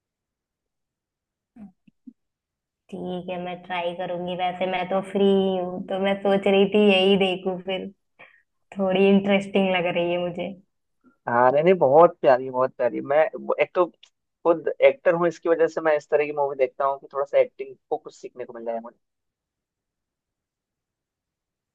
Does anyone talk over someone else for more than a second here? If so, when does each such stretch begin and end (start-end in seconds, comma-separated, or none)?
none